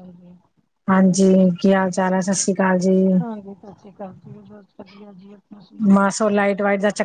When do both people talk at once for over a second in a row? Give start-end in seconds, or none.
none